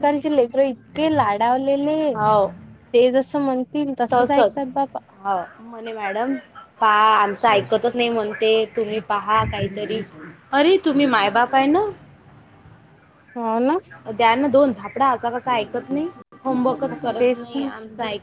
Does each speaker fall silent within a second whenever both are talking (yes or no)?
yes